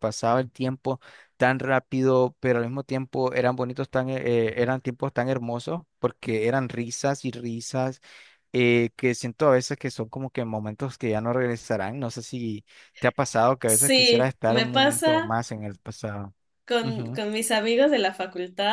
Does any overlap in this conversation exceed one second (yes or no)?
yes